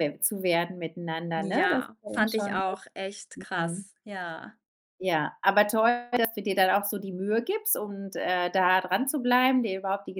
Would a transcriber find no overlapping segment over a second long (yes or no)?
no